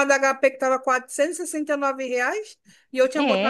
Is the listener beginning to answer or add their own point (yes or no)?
no